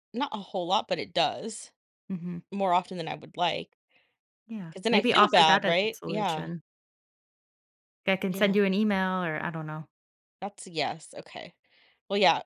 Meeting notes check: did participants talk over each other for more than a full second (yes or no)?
yes